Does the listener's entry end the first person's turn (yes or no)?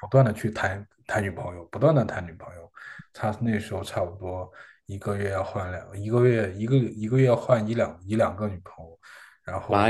yes